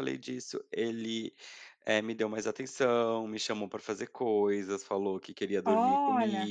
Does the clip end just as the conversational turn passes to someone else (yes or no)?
no